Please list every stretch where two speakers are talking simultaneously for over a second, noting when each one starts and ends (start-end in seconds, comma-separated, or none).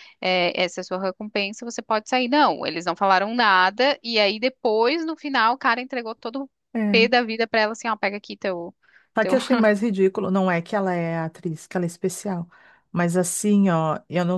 none